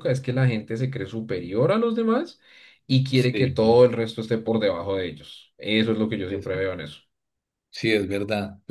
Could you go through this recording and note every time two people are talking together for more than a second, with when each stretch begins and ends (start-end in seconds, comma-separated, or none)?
none